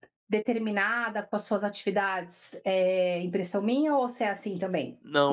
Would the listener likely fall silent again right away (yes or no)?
no